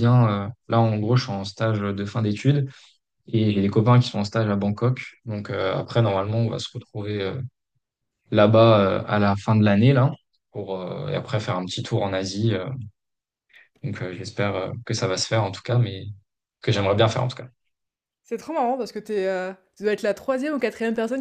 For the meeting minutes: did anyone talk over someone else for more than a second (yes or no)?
no